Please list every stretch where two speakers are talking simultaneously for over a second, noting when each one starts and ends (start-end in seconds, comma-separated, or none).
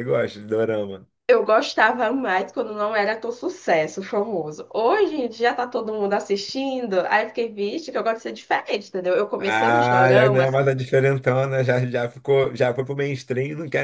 9.4-10.6